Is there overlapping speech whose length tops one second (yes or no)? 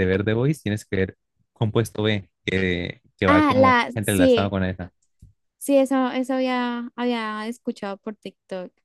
yes